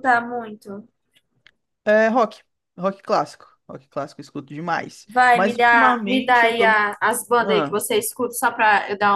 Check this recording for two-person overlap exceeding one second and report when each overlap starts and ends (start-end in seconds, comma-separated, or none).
5.1-6.8